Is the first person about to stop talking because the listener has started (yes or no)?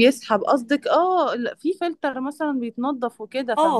yes